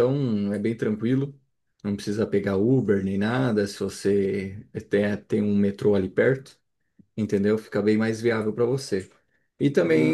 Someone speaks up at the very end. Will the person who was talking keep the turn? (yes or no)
no